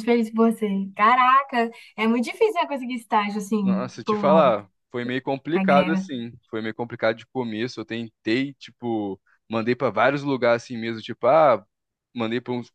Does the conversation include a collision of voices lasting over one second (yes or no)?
no